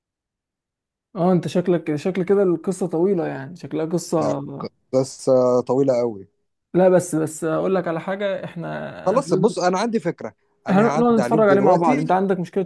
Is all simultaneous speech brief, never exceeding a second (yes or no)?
no